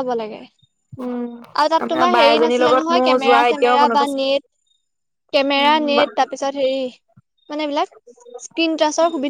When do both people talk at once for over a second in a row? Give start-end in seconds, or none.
1.8-4.2